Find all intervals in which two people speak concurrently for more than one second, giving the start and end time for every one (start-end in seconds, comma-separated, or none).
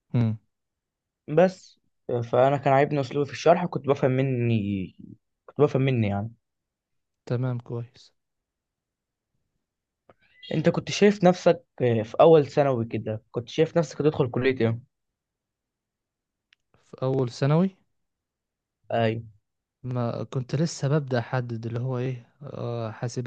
none